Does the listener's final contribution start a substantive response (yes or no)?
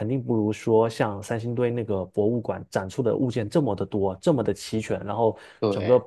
no